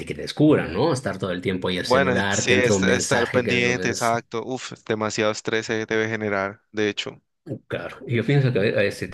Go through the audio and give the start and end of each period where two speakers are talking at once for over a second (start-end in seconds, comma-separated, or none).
1.9-4.2